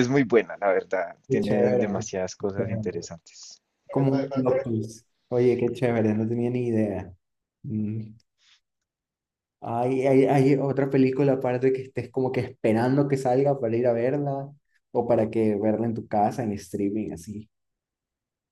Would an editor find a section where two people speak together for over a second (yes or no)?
yes